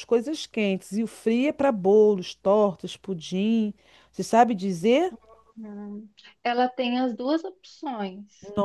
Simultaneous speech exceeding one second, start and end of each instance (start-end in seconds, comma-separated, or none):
none